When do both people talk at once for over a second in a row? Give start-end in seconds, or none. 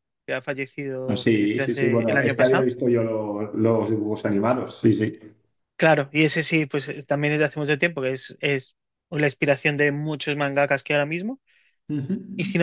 1.1-2.6